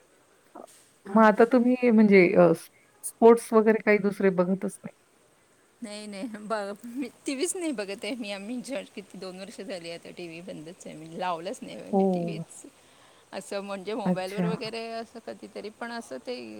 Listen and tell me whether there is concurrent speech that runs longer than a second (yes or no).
no